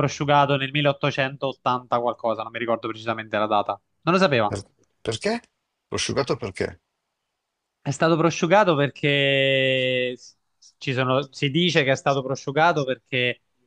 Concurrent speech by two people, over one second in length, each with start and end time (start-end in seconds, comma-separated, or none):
none